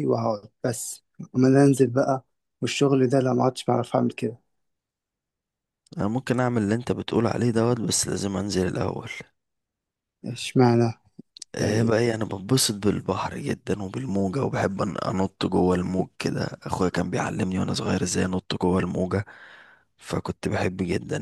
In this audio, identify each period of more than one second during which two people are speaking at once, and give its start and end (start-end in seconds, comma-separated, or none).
none